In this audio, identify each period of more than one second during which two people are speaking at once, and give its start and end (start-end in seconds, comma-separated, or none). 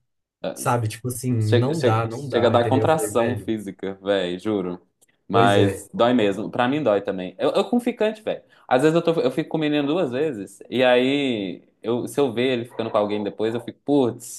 1.4-3.5